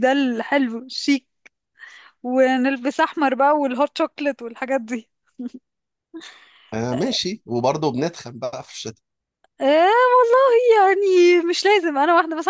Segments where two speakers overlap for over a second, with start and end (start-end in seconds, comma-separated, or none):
none